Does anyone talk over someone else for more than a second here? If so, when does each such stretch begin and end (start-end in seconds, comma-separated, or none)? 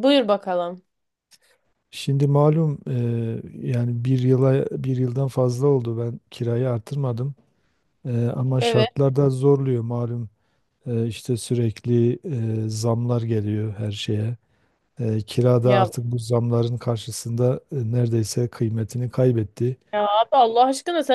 none